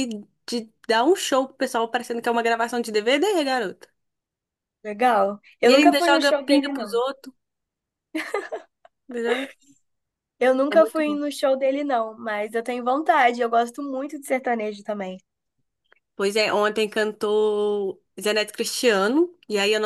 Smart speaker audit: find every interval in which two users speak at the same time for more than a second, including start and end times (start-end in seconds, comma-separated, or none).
5.6-7.0